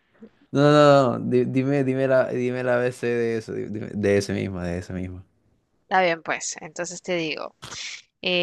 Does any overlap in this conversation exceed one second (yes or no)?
no